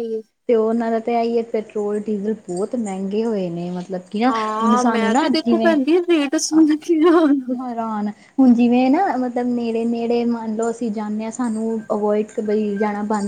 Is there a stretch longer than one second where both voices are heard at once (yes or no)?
no